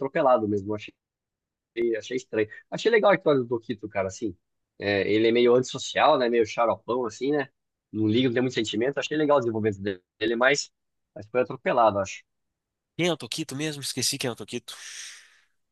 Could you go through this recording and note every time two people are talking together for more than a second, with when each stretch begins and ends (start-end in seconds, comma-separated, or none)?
none